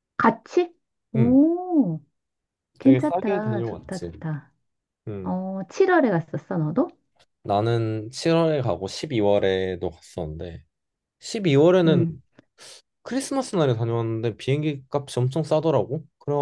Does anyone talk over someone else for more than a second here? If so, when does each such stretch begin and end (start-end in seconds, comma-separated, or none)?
2.8-4.1